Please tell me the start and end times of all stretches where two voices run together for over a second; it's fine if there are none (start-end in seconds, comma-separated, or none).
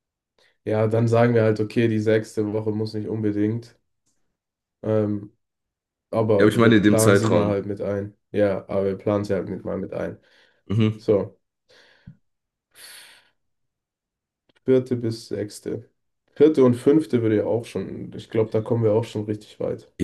6.4-7.6